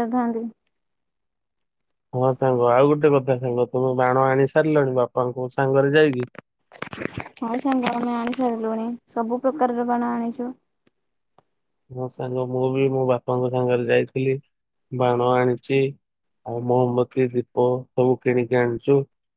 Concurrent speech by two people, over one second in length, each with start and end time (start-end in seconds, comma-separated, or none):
none